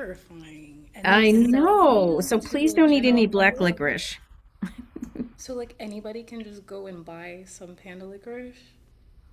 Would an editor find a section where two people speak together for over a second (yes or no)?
yes